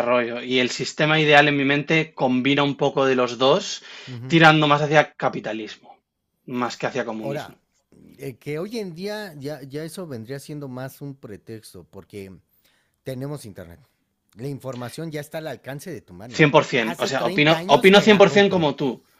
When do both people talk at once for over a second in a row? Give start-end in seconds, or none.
16.4-18.7